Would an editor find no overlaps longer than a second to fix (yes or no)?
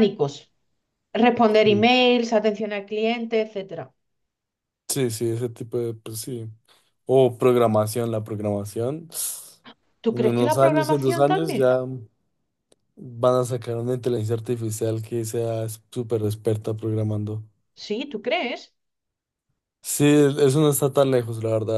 no